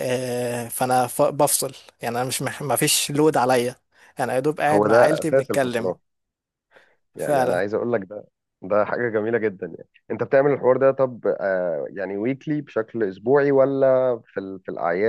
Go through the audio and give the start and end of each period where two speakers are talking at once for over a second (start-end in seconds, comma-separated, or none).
4.7-5.9